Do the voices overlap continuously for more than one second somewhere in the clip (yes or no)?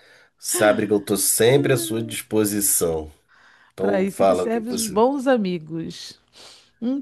yes